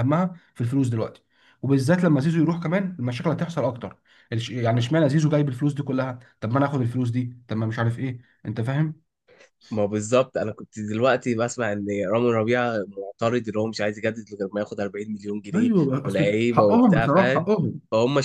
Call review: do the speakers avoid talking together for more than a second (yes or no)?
no